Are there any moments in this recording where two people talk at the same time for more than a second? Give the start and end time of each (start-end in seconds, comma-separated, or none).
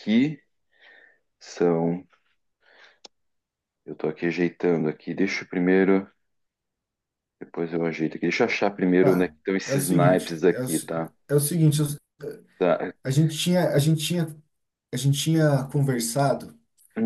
9.0-10.9